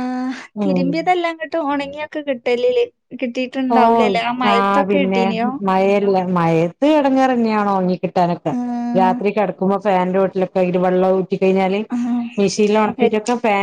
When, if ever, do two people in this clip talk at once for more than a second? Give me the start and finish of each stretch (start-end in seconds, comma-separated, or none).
none